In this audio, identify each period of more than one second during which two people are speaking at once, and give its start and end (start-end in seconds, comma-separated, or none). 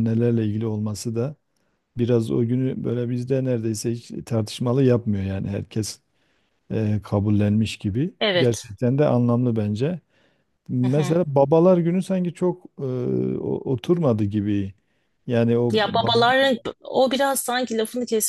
none